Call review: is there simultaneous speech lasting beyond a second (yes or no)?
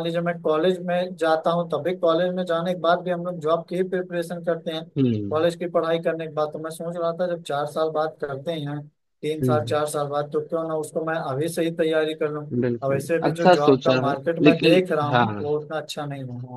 yes